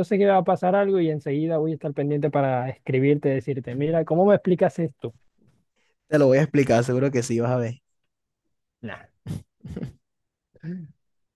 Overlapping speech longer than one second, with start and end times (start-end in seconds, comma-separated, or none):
none